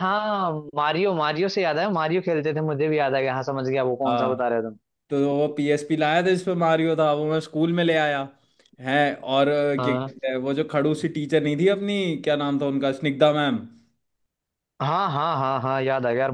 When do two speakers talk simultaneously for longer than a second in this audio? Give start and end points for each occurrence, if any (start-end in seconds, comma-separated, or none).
none